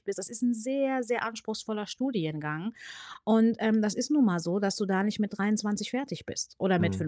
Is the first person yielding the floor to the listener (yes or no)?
no